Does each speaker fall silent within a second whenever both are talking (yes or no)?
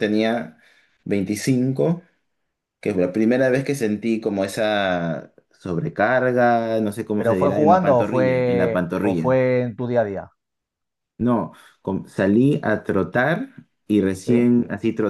no